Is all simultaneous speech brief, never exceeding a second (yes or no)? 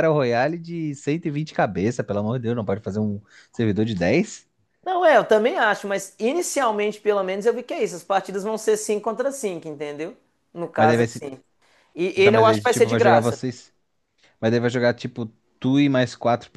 no